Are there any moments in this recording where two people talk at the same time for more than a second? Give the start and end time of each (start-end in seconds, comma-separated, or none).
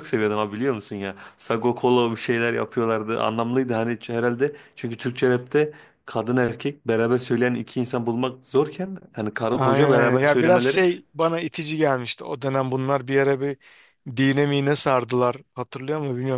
9.5-10.8